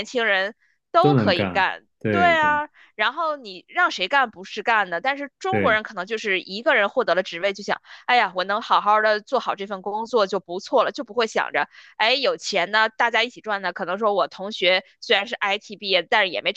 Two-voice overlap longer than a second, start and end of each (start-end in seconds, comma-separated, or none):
1.0-2.5